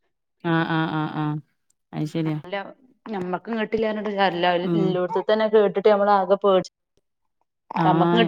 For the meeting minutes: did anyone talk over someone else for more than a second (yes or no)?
no